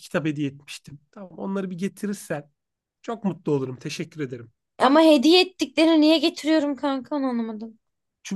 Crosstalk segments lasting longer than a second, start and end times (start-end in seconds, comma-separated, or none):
none